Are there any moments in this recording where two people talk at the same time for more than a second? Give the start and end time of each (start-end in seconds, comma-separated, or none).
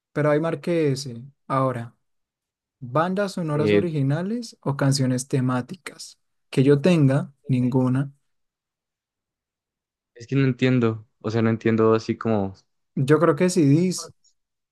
none